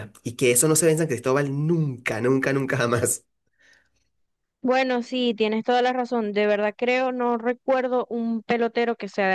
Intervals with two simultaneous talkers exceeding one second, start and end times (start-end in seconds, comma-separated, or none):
none